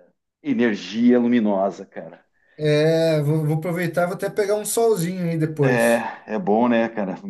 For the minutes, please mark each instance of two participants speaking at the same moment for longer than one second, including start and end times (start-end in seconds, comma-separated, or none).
none